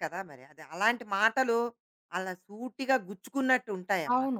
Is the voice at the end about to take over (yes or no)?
yes